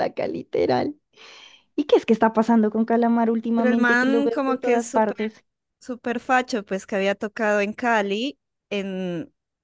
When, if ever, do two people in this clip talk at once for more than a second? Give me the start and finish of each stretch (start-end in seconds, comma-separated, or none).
3.5-5.2